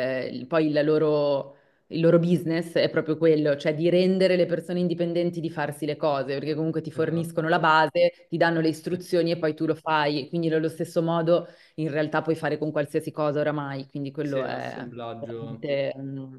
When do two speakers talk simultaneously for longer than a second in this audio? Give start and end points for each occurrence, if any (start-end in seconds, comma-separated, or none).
14.2-15.7